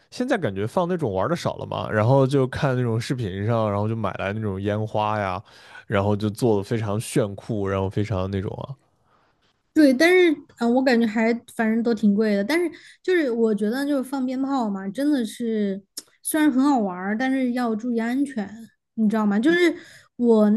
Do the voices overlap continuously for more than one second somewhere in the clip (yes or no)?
no